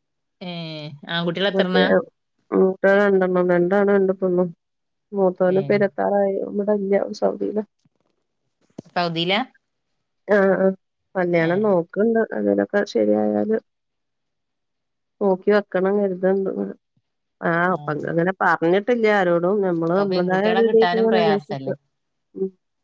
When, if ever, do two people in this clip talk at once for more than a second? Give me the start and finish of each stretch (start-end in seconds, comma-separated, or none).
19.9-21.7